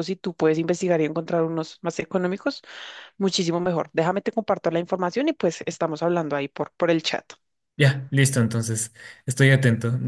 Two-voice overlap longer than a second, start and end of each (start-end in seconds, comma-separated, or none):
none